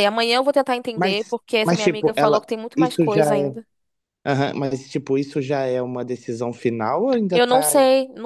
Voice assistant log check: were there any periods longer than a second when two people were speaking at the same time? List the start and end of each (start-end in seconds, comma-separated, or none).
0.9-3.6